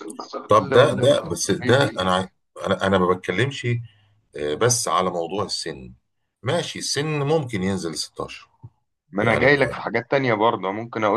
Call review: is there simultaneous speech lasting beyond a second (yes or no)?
yes